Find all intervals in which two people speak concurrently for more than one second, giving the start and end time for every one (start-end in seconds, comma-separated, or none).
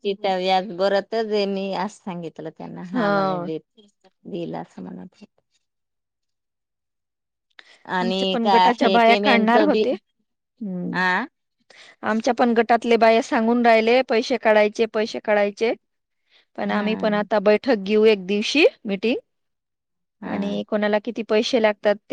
8.0-9.8